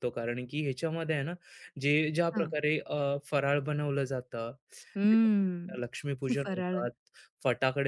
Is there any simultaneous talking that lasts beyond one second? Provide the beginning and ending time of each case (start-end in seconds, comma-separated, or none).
5.1-6.8